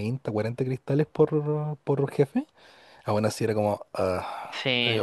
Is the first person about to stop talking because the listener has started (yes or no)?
yes